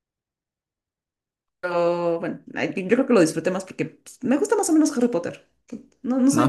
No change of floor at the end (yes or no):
no